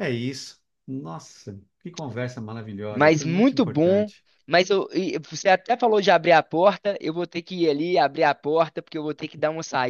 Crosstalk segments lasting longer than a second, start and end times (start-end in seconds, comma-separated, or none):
2.9-4.1